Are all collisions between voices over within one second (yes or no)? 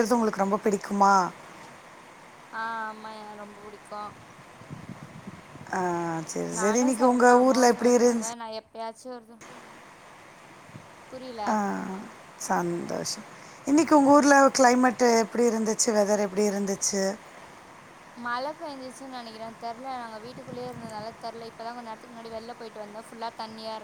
no